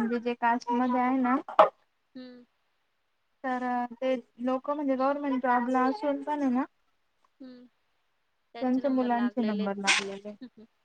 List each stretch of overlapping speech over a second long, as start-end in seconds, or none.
8.6-10.3